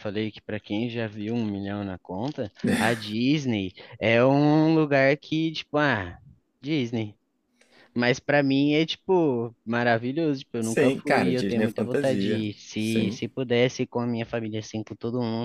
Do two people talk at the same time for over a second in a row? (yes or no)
yes